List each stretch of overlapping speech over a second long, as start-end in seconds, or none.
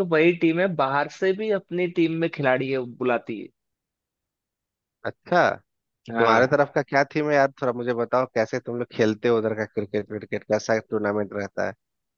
none